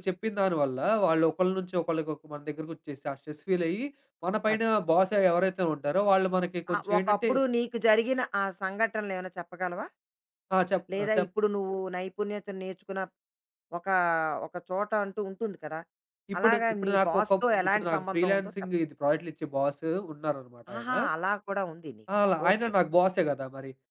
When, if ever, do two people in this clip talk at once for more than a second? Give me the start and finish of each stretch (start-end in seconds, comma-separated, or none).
16.4-18.7